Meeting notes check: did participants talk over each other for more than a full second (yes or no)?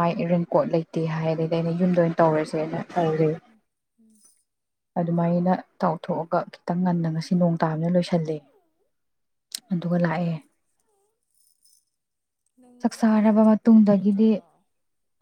yes